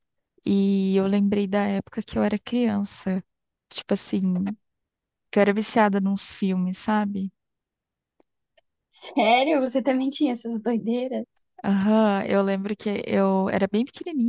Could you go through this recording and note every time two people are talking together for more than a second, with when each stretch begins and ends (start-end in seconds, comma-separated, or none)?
none